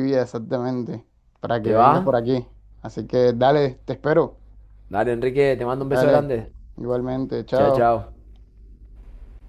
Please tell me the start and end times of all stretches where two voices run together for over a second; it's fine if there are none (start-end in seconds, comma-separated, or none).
none